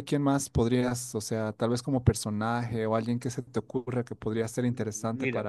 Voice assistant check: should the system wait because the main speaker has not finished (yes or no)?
no